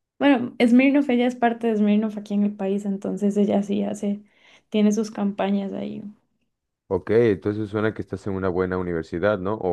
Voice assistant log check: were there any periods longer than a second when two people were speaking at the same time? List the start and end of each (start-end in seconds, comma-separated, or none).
none